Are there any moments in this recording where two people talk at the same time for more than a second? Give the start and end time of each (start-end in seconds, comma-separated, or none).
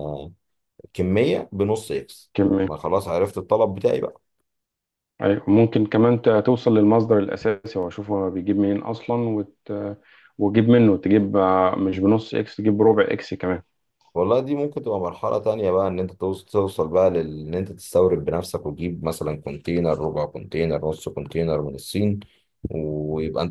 none